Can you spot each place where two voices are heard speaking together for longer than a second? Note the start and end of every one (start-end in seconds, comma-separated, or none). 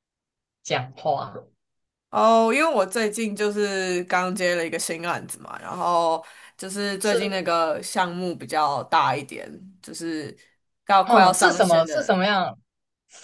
11.0-12.2